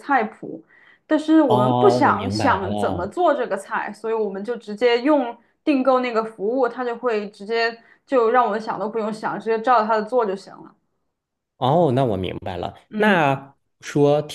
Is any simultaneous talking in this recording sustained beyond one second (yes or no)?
yes